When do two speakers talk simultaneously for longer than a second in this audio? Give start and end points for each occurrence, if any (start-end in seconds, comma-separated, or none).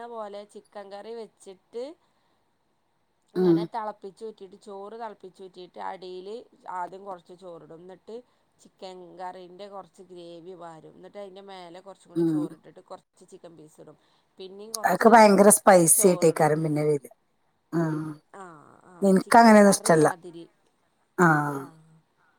none